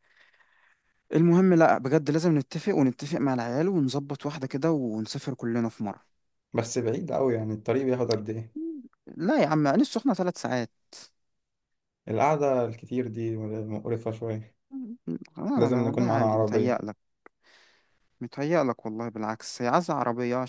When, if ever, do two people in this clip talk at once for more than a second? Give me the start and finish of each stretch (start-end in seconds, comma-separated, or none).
15.6-16.8